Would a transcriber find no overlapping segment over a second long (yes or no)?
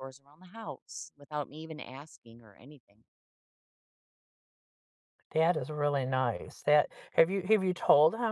yes